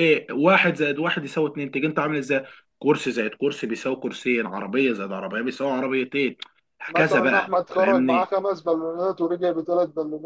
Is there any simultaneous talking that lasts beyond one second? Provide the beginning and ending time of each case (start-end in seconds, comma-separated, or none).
7.0-8.3